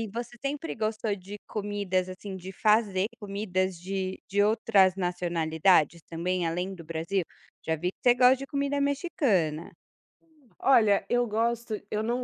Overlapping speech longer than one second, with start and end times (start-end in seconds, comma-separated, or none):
none